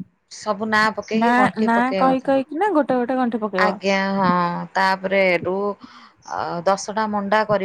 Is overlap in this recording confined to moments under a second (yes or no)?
no